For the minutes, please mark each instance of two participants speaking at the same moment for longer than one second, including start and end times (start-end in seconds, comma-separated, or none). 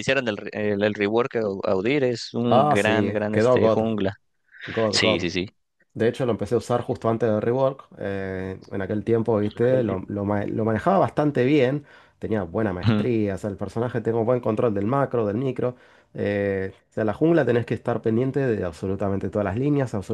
2.5-3.8